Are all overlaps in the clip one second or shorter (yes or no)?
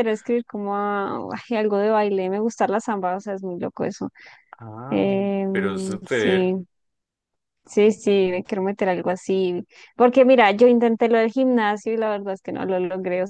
no